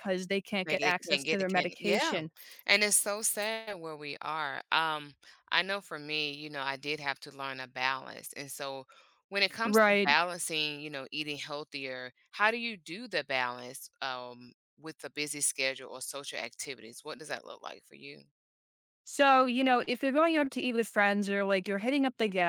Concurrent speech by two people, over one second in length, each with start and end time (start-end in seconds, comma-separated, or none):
0.7-2.2